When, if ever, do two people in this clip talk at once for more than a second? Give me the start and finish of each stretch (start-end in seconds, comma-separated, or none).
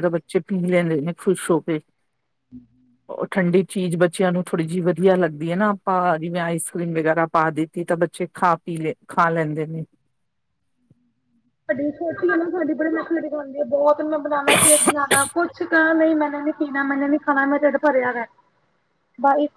none